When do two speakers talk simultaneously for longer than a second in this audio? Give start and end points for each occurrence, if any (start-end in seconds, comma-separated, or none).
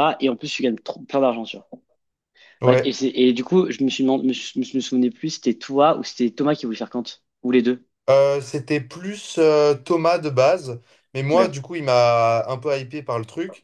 none